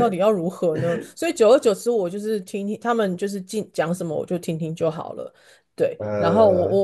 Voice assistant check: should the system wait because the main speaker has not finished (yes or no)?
yes